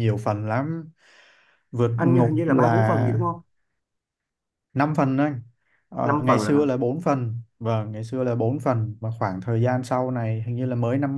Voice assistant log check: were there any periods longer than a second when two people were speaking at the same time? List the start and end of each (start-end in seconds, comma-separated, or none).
2.0-3.2